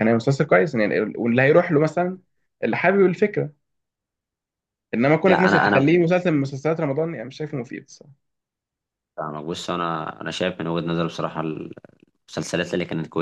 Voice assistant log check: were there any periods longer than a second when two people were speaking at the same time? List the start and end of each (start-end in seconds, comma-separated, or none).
none